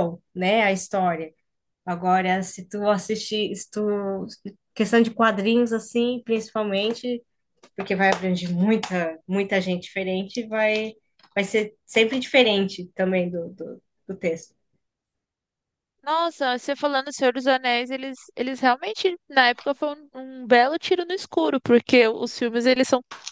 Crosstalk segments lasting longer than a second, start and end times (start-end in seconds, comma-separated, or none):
none